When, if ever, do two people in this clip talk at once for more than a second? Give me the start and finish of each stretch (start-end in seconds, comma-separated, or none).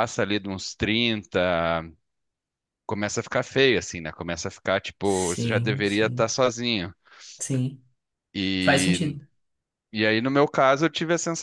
5.0-6.2